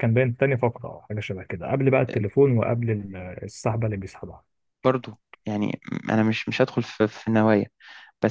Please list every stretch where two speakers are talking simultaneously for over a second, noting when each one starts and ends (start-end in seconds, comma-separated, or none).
none